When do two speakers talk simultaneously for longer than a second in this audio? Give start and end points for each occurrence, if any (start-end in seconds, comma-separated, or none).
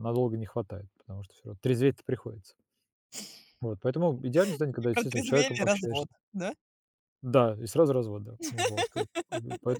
4.8-6.1